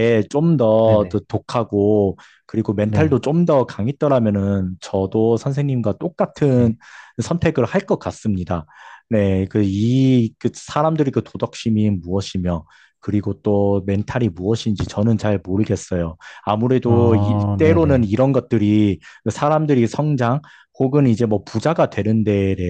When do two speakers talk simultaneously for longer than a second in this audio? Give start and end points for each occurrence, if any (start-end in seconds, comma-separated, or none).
16.9-18.1